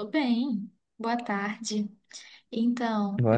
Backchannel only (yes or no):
yes